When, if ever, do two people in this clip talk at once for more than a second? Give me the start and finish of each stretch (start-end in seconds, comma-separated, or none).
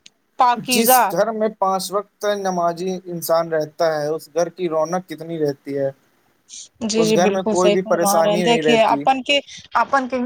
7.0-9.0